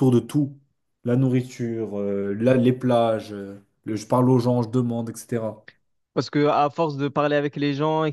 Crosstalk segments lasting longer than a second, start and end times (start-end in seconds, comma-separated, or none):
none